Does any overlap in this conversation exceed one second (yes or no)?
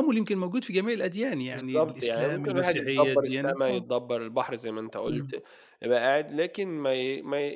yes